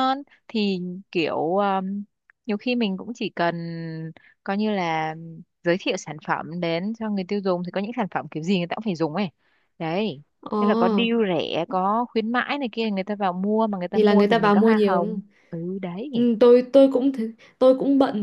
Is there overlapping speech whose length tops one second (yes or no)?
yes